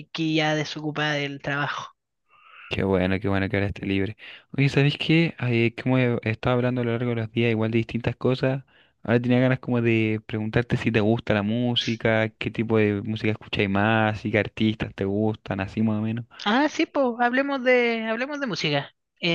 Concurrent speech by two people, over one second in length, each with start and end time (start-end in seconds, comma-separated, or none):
none